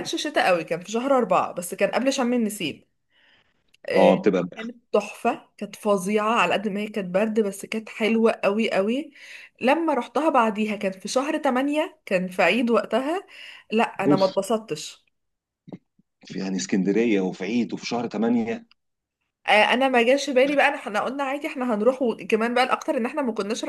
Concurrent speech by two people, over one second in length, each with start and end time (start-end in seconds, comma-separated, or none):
none